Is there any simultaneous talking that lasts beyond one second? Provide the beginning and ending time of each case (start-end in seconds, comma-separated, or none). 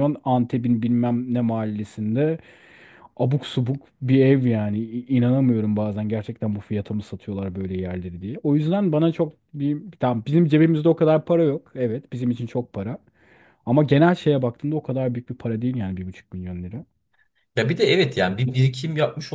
none